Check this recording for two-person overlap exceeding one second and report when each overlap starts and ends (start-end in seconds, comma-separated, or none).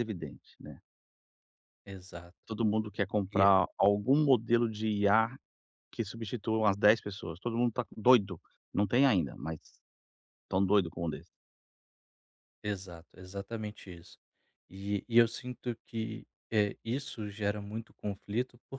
none